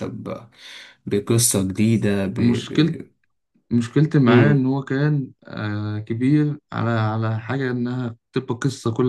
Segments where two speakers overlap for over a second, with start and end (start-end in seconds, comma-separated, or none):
none